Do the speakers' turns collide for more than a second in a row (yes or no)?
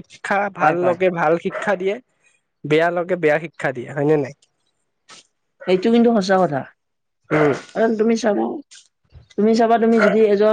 no